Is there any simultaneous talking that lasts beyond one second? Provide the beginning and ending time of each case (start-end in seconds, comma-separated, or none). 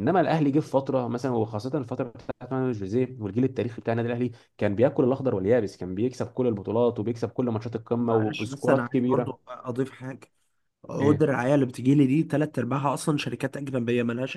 8.1-9.4